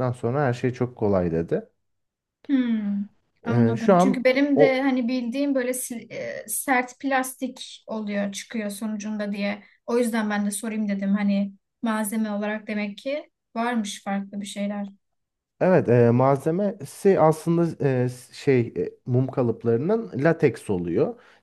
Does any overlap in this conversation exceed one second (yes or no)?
yes